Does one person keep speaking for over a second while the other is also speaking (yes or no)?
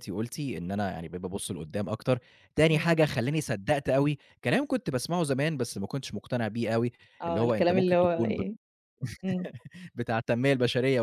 yes